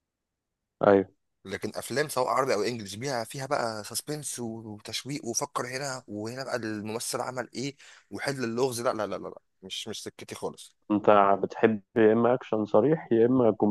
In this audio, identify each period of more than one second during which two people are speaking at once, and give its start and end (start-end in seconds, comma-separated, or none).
none